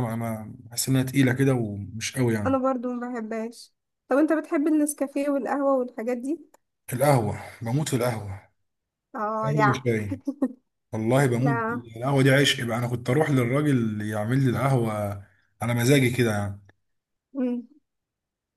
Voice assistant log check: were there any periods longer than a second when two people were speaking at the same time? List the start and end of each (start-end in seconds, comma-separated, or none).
none